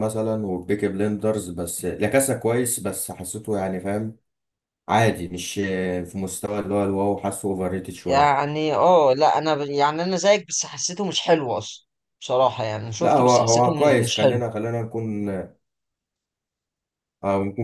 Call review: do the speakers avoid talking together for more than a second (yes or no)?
no